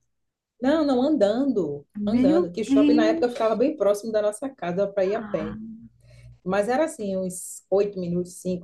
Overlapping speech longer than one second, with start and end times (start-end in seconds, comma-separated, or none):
1.9-3.6